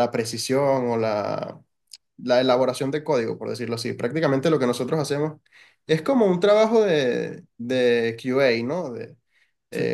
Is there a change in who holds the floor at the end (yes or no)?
no